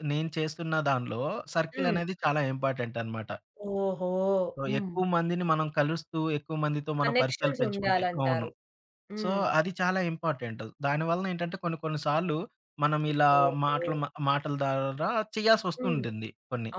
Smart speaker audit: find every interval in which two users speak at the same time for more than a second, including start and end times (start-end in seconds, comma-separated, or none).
7.0-8.5